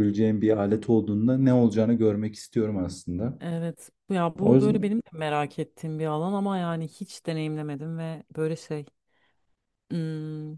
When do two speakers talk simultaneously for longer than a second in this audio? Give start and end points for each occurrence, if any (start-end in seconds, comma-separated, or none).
none